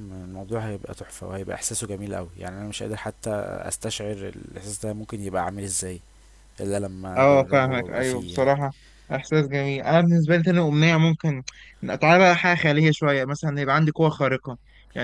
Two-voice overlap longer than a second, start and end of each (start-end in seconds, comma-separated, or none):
7.2-8.5